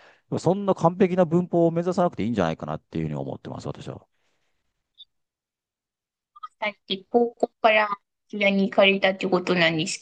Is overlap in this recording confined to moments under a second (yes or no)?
yes